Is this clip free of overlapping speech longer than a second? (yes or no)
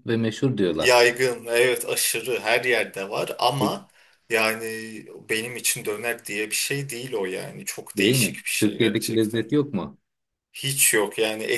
no